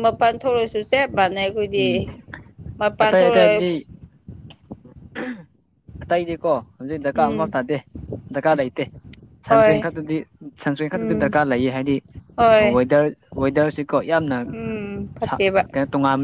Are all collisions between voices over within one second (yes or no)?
no